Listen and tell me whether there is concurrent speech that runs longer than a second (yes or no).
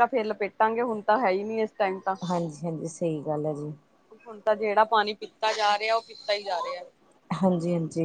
no